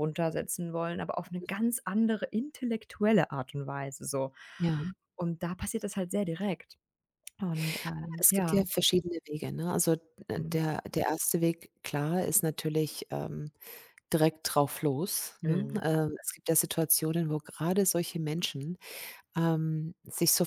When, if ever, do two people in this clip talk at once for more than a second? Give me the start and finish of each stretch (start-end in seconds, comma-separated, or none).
none